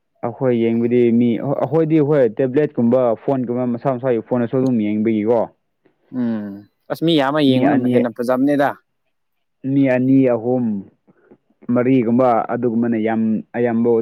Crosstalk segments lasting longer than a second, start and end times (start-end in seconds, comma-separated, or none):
none